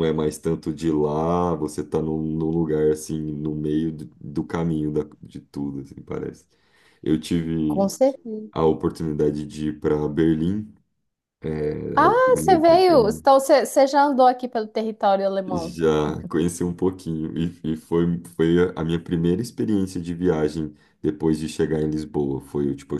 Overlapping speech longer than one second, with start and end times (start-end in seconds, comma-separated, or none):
11.9-13.2